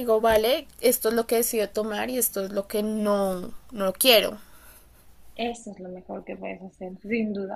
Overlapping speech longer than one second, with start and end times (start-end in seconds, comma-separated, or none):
none